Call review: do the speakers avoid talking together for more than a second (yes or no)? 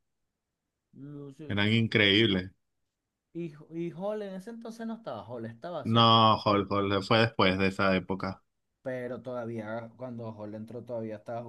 yes